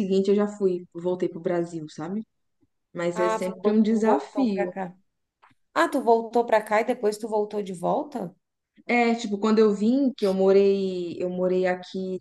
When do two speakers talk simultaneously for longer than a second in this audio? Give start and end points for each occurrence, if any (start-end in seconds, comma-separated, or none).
3.1-4.7